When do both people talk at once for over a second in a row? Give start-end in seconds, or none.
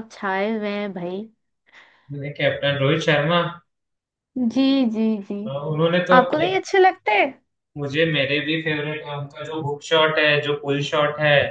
none